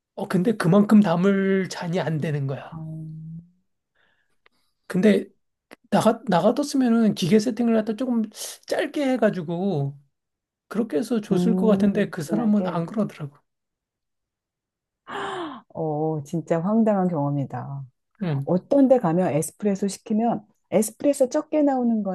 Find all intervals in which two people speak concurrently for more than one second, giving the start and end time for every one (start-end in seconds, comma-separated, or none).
11.3-12.8